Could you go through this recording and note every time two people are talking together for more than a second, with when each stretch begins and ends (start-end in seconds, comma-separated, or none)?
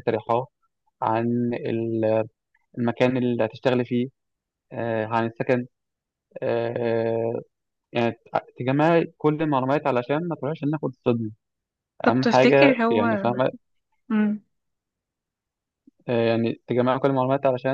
12.1-13.3